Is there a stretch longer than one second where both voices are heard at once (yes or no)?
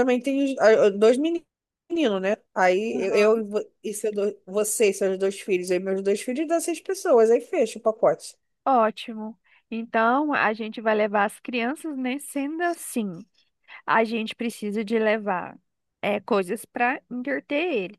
no